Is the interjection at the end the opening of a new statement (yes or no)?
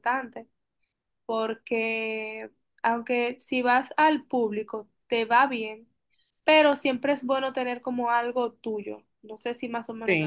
no